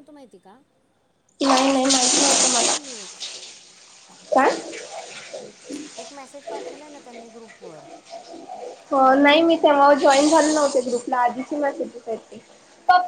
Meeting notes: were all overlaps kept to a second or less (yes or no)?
no